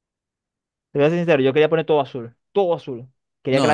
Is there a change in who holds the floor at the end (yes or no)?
no